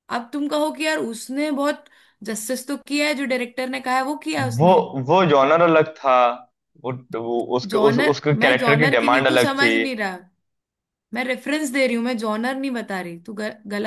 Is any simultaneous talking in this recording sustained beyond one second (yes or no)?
yes